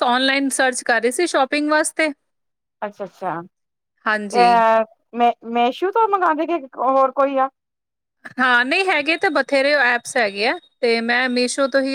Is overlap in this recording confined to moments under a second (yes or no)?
yes